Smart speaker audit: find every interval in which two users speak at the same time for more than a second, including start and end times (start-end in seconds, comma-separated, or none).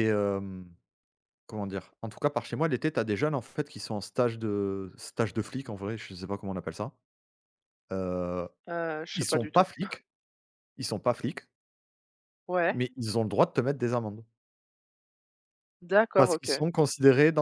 none